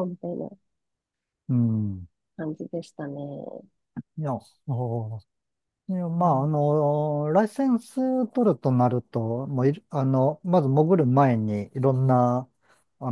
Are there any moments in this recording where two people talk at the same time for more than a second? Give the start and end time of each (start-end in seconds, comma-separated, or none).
none